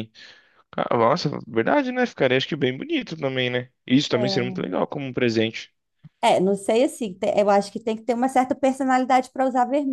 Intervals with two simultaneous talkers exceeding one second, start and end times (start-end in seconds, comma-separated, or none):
none